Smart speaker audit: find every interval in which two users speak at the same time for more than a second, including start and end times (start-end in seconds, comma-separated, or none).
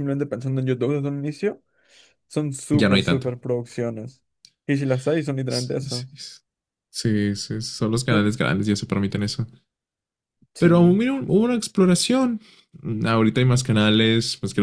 none